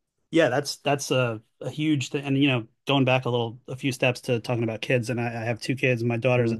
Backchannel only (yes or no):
yes